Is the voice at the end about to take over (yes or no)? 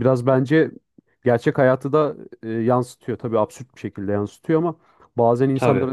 no